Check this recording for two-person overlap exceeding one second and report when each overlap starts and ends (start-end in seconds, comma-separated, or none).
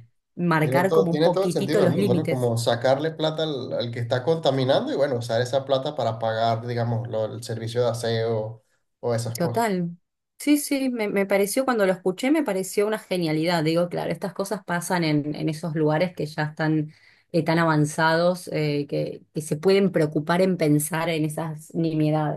0.6-2.5